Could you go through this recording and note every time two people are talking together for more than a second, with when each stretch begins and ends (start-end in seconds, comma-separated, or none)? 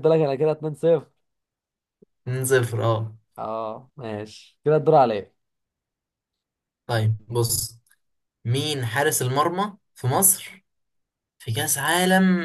none